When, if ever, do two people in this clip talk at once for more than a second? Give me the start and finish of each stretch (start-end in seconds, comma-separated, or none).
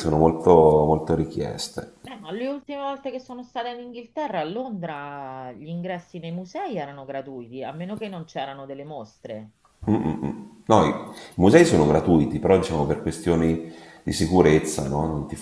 none